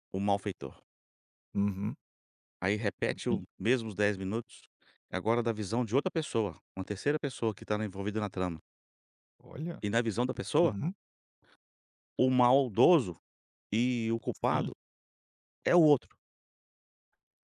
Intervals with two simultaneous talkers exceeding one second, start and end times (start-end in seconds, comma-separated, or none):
none